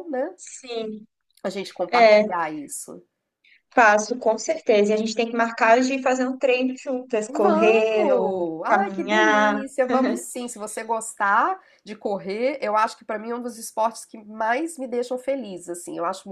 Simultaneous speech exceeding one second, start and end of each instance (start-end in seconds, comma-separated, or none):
7.3-9.6